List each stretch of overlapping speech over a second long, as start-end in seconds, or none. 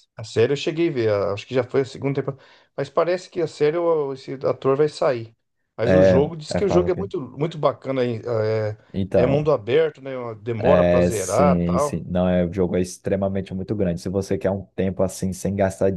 5.8-7.1, 10.7-12.1